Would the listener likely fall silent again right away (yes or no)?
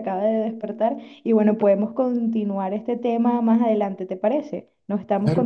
no